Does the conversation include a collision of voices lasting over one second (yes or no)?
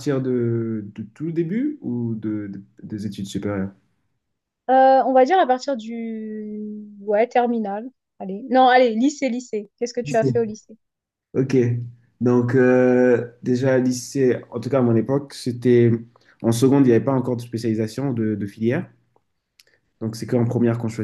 no